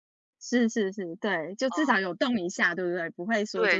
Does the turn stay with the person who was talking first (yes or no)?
no